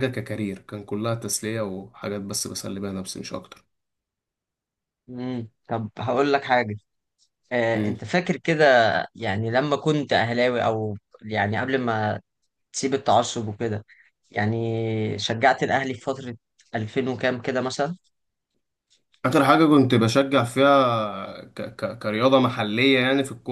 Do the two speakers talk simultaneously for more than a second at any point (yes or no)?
no